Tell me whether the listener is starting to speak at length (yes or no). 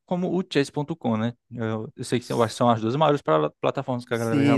yes